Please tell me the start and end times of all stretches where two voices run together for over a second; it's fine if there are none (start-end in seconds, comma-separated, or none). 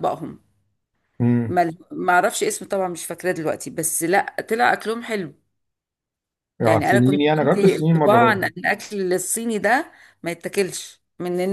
6.6-8.4